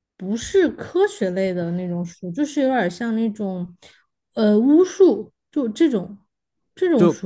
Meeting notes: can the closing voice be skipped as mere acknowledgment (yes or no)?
no